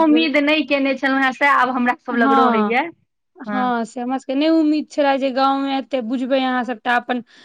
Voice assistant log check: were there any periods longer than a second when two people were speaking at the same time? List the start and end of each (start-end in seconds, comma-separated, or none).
none